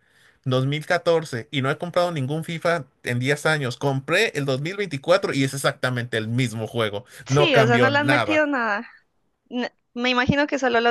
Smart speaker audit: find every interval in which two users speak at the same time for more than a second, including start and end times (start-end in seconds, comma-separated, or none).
7.2-8.5